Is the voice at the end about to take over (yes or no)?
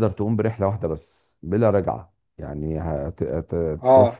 no